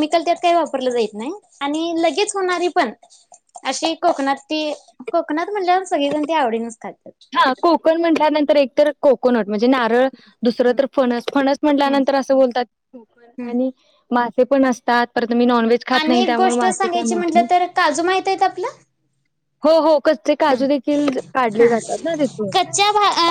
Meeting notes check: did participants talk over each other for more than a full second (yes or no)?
yes